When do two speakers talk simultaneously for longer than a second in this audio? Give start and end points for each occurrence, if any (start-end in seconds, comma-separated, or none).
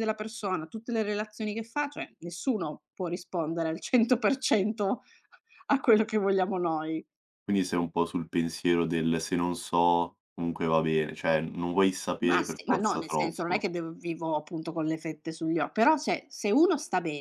12.2-13.7